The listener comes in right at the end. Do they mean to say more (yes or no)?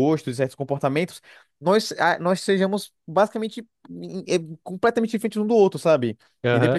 yes